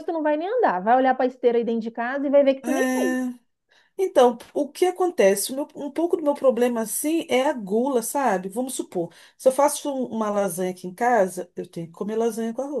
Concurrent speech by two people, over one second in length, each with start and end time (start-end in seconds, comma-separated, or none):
none